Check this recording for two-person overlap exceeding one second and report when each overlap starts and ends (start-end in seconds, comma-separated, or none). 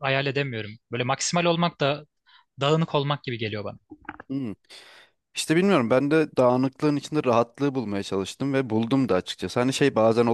none